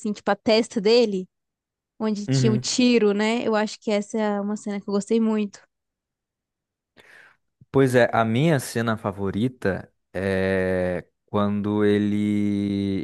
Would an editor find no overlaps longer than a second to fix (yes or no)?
yes